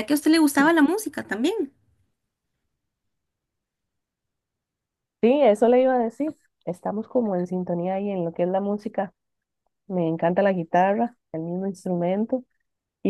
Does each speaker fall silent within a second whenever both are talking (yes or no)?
yes